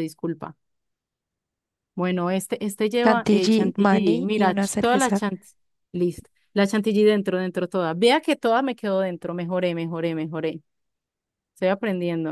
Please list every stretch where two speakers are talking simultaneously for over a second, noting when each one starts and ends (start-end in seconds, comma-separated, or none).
3.0-5.2